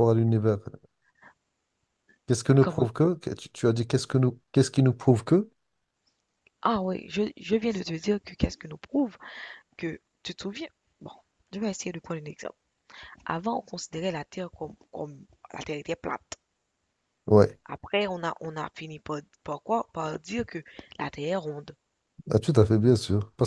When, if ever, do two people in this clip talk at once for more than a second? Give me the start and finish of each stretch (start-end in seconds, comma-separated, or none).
none